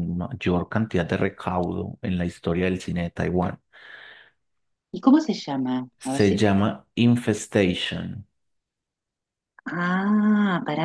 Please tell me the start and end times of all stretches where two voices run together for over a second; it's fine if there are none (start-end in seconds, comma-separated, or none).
none